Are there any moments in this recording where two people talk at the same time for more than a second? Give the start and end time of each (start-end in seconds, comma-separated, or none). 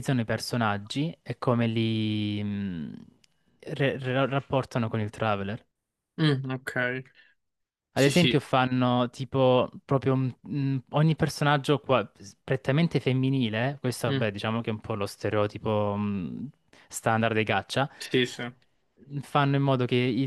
none